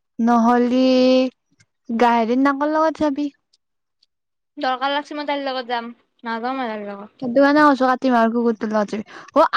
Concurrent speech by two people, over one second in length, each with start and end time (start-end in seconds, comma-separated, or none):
none